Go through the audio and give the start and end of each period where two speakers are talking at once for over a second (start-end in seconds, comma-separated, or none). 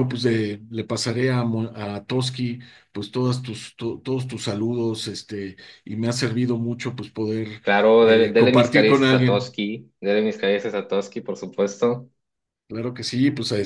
8.0-9.5